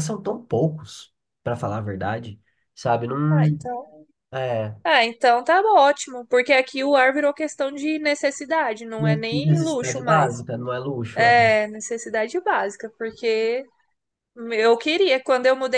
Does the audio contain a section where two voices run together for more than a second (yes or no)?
yes